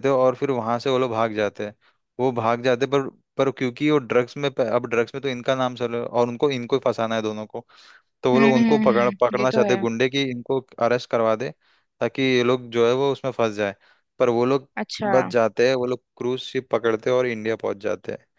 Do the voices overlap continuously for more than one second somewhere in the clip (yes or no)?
yes